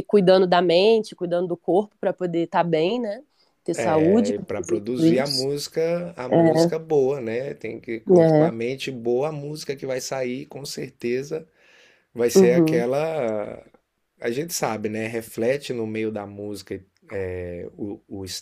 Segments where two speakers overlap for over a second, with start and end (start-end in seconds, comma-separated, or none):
3.7-5.5